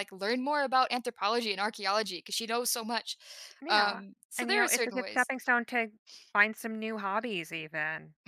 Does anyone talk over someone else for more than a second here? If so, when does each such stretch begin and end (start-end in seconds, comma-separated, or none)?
3.7-5.3